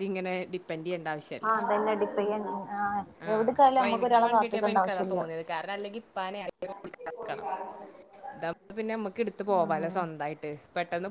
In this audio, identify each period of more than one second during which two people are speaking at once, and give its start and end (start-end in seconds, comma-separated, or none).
none